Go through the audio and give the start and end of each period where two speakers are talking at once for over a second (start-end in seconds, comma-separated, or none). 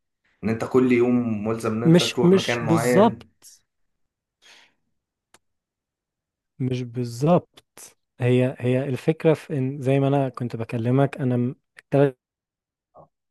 1.9-3.3